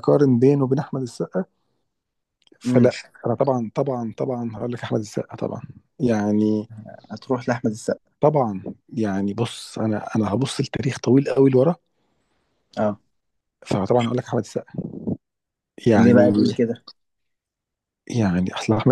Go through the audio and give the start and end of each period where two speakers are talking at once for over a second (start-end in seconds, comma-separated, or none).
none